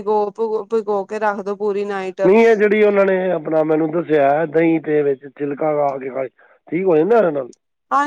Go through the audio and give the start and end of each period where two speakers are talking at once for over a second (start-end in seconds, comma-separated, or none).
none